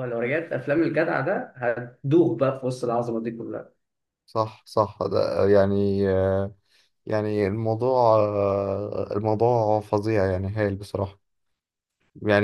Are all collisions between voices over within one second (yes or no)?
yes